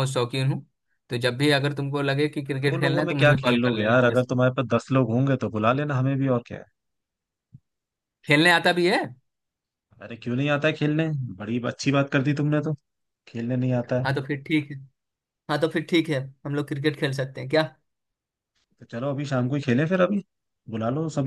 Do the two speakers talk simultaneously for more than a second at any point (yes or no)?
yes